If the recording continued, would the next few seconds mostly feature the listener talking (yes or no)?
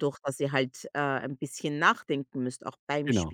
yes